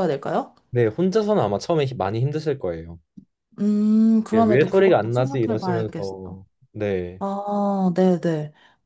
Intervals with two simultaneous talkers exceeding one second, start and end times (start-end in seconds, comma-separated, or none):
4.3-6.2